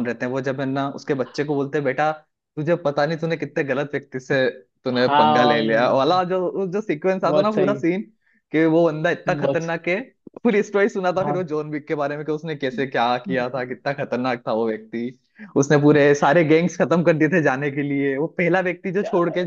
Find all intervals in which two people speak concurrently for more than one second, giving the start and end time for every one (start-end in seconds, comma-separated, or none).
4.9-6.2